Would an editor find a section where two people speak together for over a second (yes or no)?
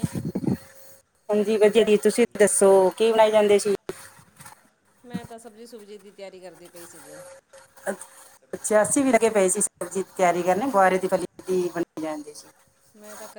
no